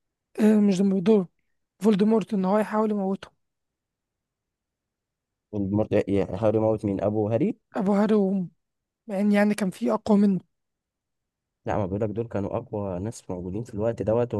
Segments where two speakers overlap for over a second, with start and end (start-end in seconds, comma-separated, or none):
none